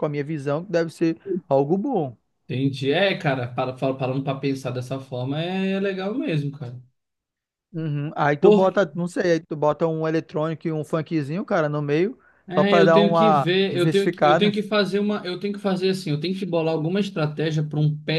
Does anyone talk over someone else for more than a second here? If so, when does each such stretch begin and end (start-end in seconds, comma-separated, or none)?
12.5-14.6